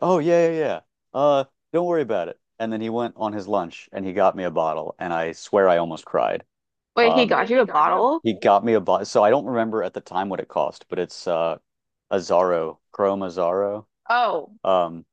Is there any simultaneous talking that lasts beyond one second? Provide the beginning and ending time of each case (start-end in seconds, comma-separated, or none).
7.0-8.2